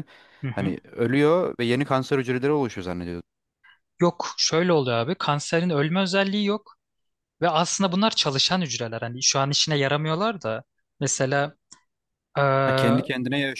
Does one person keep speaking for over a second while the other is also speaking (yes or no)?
no